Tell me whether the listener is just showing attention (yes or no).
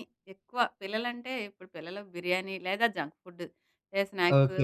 no